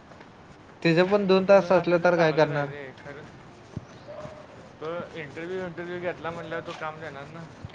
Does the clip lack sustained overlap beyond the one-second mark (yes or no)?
no